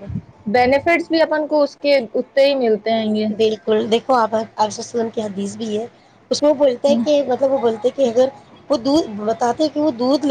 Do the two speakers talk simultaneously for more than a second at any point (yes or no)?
no